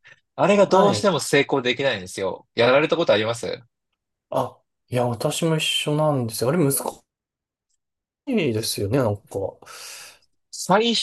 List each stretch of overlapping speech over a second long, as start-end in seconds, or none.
none